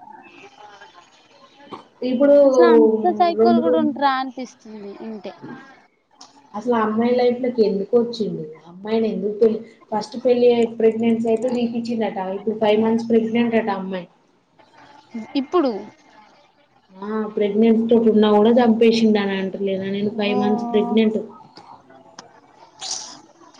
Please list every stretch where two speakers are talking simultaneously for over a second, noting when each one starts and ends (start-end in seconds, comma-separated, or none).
none